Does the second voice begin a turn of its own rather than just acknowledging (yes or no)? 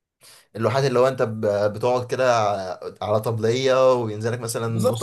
yes